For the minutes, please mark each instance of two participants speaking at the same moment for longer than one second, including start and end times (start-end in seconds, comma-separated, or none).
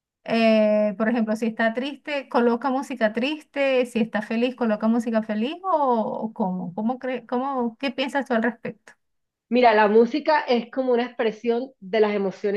none